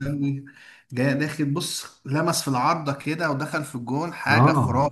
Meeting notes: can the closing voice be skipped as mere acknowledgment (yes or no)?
no